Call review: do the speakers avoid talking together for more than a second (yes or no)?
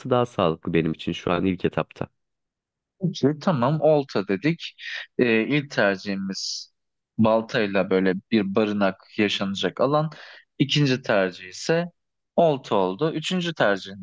yes